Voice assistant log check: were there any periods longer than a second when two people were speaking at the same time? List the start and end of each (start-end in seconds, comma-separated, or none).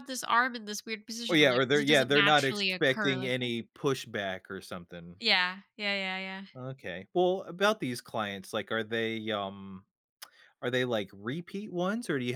1.3-3.5